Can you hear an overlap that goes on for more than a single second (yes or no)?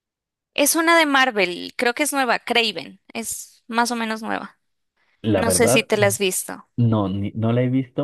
no